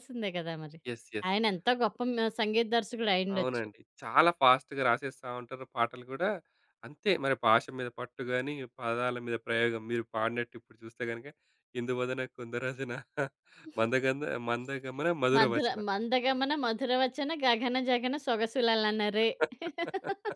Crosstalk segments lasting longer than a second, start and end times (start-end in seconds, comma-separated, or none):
none